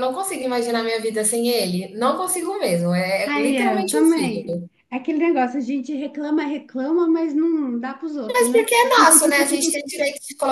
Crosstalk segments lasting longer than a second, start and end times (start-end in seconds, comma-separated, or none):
3.2-4.6